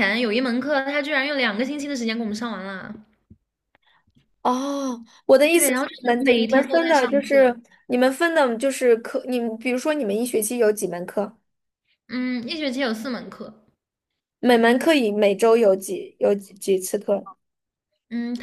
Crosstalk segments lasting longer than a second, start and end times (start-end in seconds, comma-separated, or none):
5.5-7.5